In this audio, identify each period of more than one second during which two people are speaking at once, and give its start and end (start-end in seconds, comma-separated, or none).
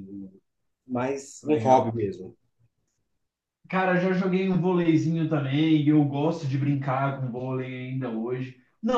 none